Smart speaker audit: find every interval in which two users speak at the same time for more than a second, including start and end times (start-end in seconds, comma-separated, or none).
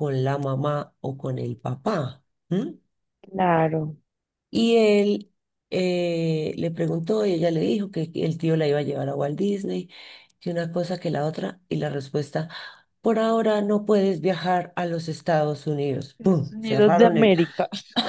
16.2-17.4